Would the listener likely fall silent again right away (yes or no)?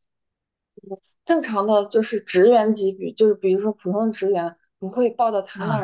yes